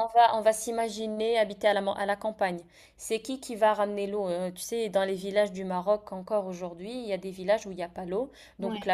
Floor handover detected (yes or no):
no